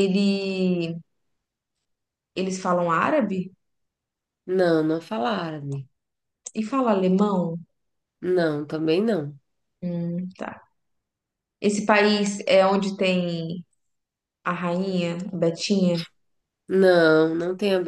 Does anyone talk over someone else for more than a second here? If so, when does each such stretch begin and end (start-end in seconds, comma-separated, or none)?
none